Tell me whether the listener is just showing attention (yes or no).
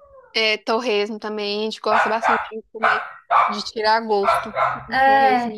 no